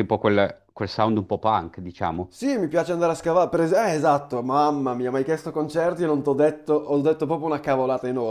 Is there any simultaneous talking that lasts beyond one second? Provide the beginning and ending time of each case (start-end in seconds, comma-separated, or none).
none